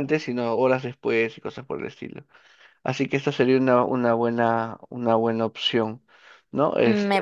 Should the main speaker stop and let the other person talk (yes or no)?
yes